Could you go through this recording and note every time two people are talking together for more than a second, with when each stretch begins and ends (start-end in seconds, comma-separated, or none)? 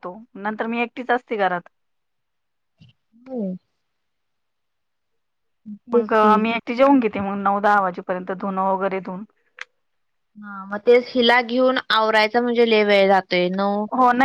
none